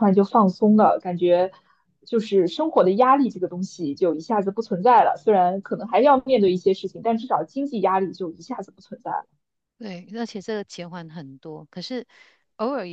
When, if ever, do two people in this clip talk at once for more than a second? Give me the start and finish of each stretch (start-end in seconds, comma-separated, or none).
none